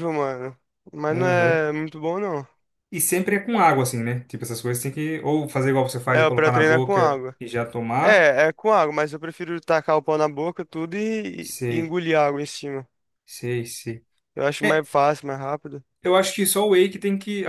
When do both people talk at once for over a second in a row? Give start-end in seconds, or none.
6.0-7.3